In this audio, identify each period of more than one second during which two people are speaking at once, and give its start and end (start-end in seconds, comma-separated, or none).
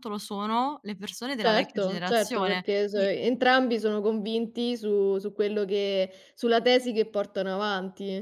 1.4-3.1